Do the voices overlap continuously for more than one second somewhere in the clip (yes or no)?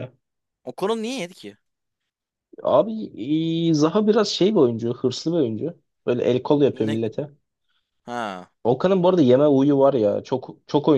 no